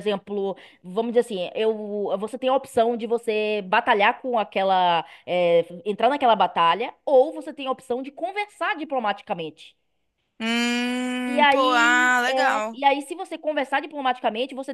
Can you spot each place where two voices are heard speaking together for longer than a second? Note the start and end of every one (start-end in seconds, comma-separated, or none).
11.3-12.8